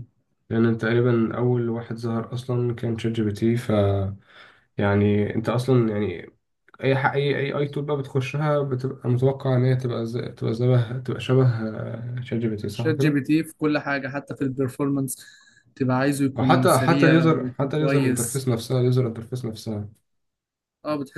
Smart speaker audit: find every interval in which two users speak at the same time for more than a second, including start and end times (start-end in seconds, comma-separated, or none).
16.4-18.4